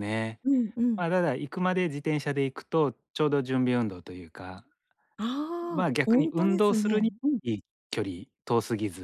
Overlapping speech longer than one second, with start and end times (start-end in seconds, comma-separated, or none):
5.7-7.4